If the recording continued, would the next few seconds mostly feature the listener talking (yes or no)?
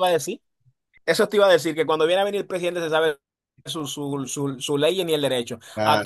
no